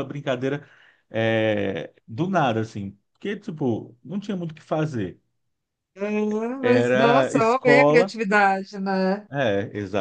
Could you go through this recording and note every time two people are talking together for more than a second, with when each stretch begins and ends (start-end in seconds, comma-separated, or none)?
6.6-8.1